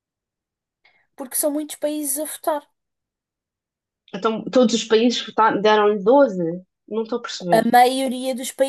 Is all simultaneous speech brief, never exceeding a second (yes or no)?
yes